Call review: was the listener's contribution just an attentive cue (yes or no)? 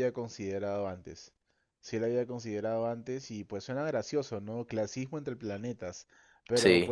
yes